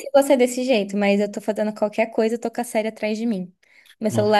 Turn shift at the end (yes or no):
no